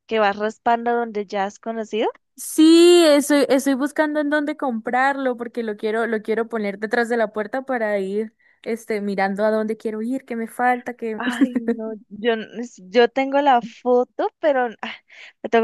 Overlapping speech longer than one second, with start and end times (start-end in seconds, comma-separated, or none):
none